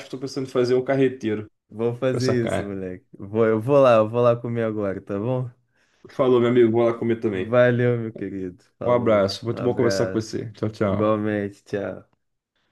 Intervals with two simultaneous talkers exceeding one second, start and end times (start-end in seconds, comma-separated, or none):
8.9-10.2